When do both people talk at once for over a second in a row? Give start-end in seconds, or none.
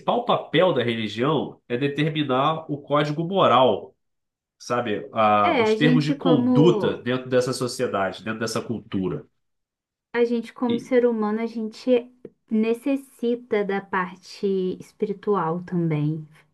5.4-7.1